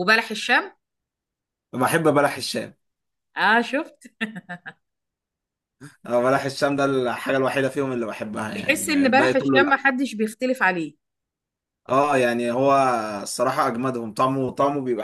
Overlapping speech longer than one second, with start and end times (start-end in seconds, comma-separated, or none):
8.6-9.8